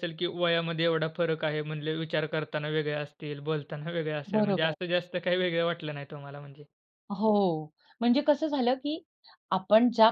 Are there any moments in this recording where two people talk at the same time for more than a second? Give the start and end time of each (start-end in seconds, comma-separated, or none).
none